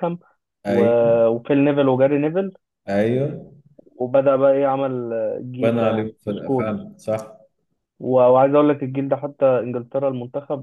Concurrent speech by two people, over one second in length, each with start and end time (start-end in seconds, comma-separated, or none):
5.6-6.9